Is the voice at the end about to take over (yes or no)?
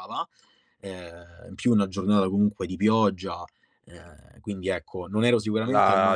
yes